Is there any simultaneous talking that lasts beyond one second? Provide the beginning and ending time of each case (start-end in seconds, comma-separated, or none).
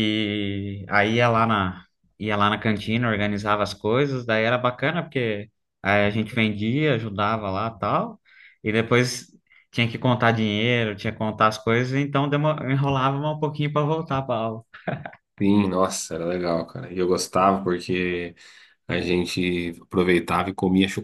none